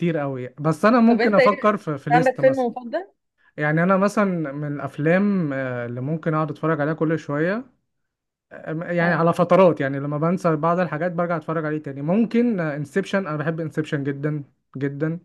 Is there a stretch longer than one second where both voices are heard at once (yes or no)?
yes